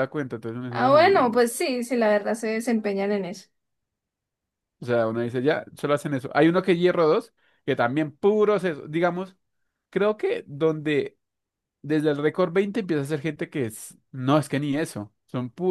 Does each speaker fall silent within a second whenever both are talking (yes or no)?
yes